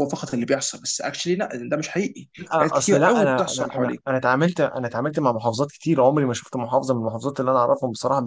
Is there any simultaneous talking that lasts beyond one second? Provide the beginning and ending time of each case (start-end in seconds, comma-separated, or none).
2.4-4.0